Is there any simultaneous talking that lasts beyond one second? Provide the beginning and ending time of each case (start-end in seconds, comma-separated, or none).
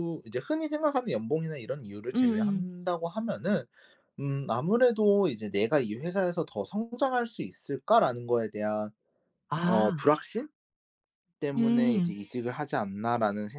none